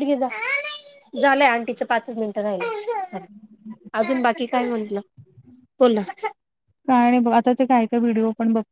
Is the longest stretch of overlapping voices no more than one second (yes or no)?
yes